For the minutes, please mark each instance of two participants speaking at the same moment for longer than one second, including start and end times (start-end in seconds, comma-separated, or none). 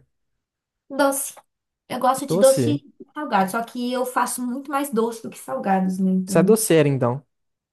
none